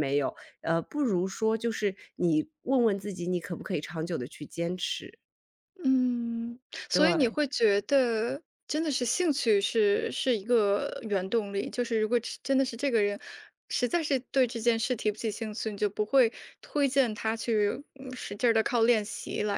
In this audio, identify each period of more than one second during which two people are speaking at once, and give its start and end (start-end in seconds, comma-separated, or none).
none